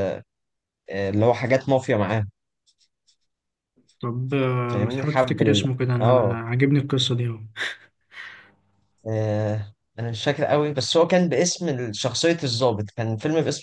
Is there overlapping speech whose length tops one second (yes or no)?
yes